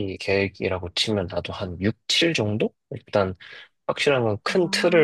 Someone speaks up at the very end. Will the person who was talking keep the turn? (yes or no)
yes